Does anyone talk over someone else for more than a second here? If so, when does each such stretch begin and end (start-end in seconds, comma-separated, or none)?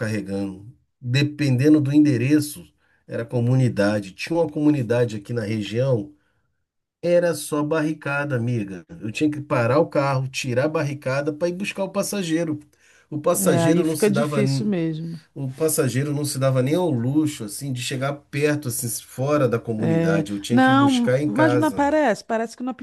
13.3-14.7, 19.8-21.8